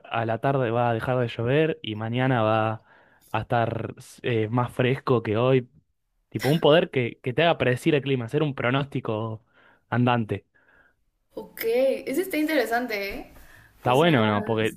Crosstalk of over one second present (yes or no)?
no